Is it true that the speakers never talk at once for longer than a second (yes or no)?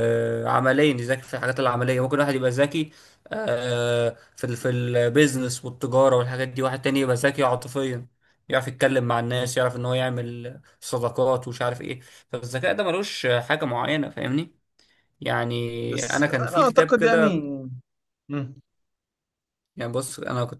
no